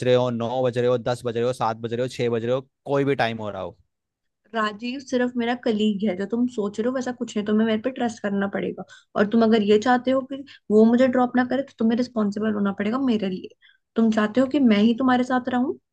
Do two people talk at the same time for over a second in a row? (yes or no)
no